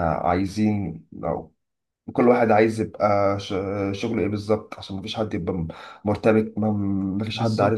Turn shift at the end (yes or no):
no